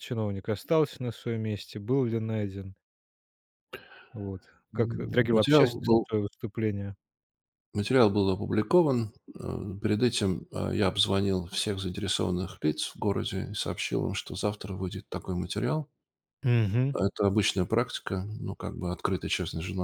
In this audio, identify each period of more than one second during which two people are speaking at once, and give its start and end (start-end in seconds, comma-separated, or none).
4.7-6.1